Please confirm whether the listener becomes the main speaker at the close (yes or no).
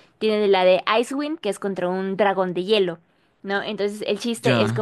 no